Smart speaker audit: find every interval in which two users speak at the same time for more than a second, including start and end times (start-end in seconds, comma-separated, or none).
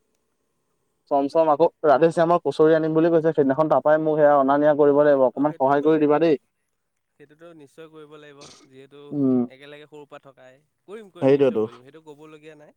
none